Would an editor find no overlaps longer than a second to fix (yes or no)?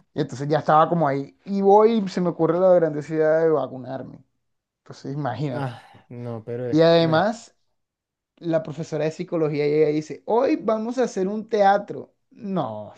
yes